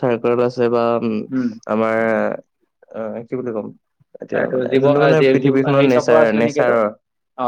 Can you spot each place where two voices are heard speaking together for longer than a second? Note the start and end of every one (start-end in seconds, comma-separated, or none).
4.4-6.8